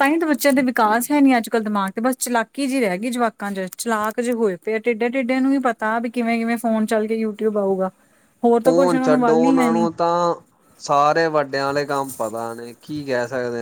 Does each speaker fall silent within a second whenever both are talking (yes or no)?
no